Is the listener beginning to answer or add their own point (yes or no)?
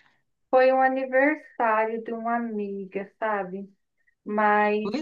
yes